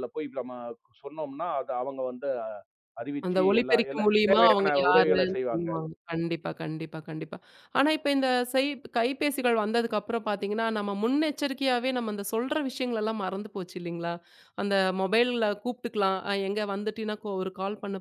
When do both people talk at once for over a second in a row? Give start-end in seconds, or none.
3.3-5.7